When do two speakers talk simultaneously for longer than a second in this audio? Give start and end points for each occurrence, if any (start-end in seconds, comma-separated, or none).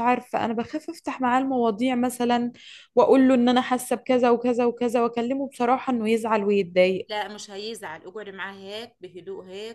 none